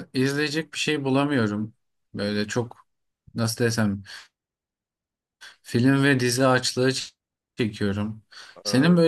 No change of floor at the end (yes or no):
yes